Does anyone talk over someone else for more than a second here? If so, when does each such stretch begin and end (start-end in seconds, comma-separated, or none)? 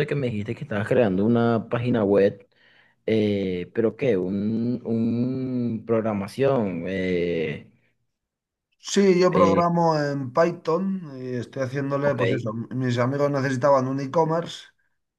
none